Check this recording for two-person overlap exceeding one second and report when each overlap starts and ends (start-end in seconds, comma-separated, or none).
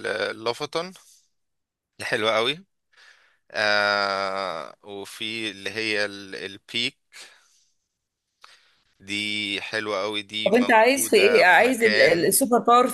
10.4-12.3